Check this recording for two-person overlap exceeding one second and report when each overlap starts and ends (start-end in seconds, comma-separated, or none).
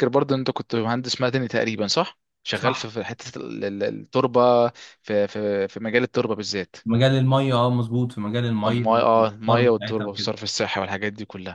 8.7-10.3